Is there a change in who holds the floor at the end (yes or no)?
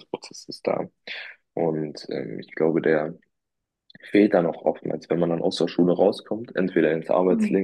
no